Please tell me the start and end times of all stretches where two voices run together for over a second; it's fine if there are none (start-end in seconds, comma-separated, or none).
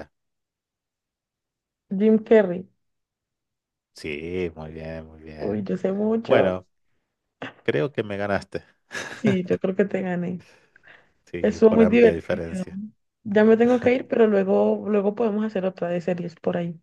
11.4-12.7